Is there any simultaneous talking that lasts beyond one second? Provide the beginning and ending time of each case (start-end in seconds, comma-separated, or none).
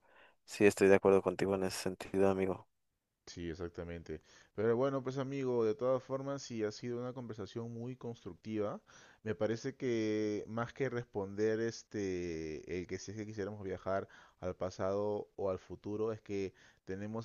none